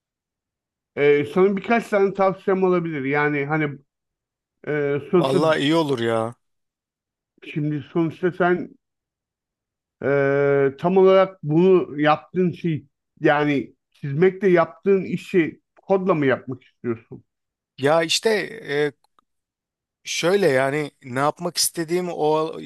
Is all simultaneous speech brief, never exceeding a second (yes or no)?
yes